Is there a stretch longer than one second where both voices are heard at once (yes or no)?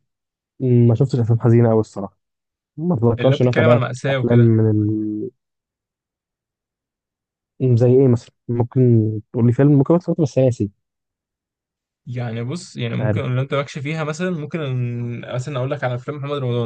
yes